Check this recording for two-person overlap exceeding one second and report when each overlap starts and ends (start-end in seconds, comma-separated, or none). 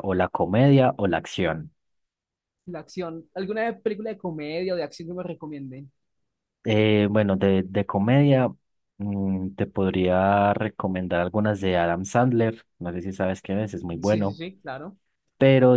none